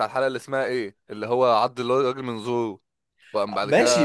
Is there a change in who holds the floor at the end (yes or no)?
yes